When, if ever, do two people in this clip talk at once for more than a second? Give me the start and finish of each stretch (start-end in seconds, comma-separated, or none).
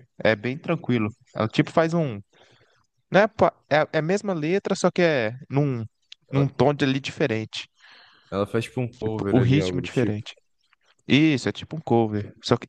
8.9-10.2